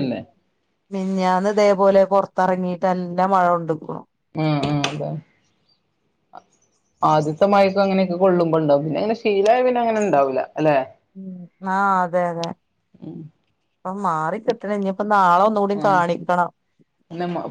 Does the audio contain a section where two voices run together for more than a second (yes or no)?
no